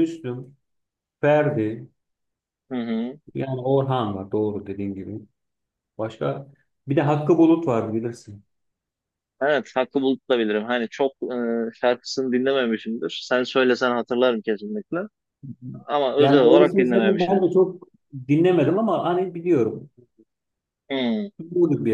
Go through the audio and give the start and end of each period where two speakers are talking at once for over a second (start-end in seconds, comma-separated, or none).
16.2-17.4